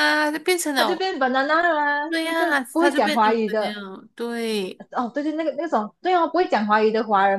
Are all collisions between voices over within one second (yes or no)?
no